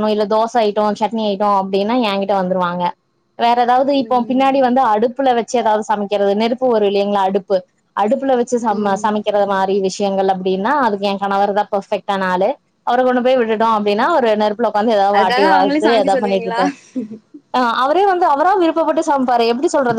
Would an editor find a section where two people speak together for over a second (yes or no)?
yes